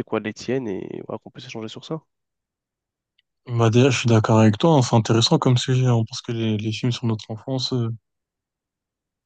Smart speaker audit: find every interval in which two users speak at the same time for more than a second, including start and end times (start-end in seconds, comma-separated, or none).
none